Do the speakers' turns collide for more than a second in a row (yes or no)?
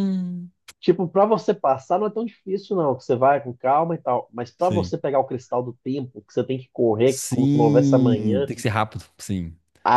yes